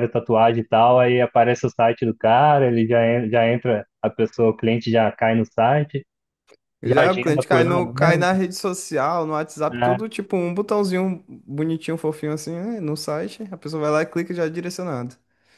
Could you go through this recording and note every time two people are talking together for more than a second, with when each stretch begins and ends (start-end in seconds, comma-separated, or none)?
6.8-8.2